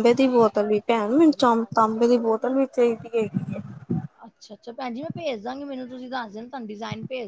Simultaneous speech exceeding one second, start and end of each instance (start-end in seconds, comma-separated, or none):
none